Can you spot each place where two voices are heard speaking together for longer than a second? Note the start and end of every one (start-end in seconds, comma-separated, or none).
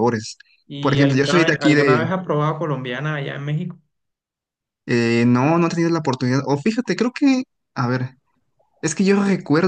0.8-2.0